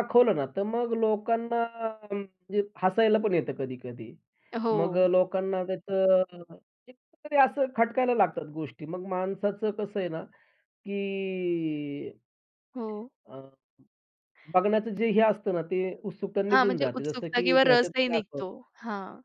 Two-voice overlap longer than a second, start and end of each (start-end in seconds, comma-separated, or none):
16.5-18.4